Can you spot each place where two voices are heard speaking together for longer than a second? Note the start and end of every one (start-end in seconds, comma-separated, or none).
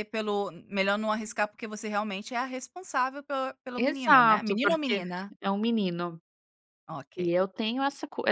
3.8-5.0